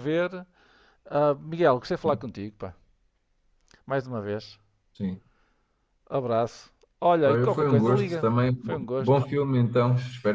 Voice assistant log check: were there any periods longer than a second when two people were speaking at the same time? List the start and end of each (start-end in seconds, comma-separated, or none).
7.2-9.3